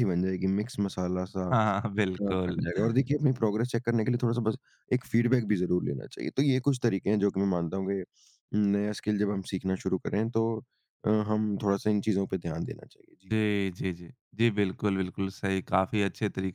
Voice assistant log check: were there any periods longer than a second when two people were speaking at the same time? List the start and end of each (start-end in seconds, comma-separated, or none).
none